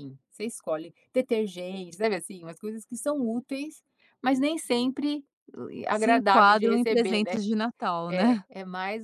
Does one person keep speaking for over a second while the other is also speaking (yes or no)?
yes